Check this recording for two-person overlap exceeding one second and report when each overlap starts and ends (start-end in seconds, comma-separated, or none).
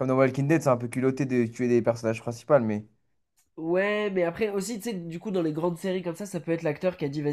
none